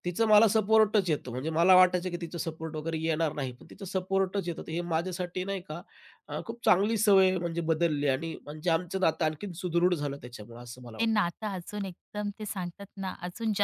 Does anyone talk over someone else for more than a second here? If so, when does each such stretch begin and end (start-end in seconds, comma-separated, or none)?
none